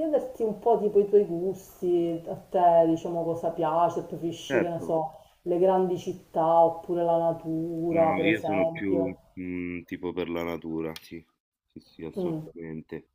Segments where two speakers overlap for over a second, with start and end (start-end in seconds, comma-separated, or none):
7.9-9.2